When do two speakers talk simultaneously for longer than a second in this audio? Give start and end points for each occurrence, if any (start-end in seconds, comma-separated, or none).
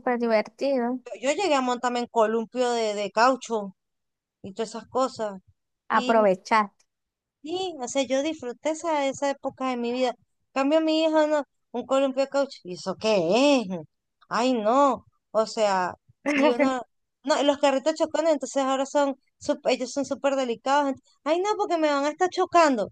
none